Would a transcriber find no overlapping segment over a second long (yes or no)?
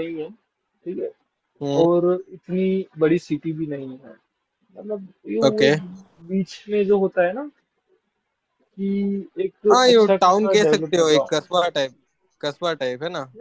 no